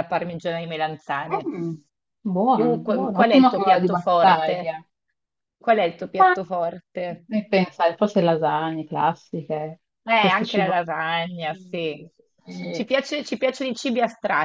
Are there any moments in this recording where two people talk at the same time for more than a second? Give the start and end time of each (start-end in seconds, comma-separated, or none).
2.5-4.7